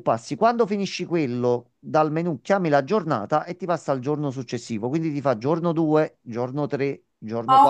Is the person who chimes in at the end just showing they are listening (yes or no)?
no